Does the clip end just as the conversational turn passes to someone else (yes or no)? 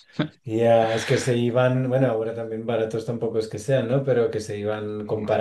no